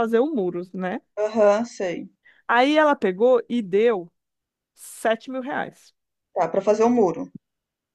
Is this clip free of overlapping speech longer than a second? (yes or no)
yes